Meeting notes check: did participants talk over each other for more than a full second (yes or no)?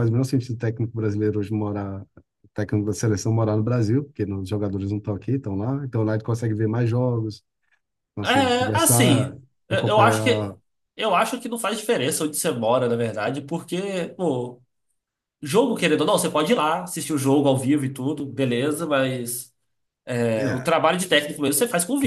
yes